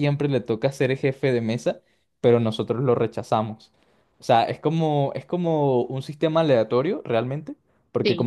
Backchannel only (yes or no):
yes